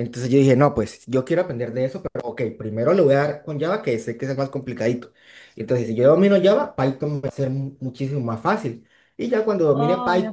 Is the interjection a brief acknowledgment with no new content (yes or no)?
yes